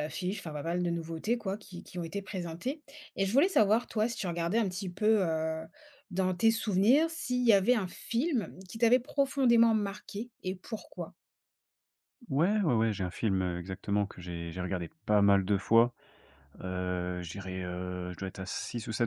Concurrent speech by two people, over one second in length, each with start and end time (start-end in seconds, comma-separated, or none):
none